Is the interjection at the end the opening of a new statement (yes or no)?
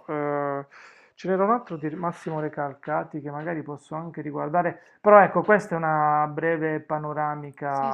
yes